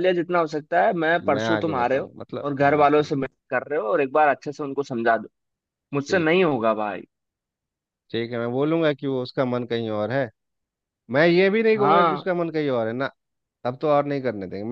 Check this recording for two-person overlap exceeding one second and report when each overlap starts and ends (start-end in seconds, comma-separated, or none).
1.3-3.1